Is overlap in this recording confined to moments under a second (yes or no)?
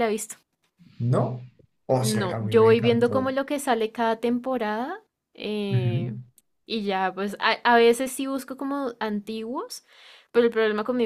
no